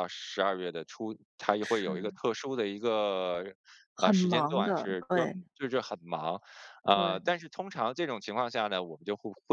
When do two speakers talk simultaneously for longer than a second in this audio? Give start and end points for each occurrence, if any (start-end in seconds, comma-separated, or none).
4.0-5.3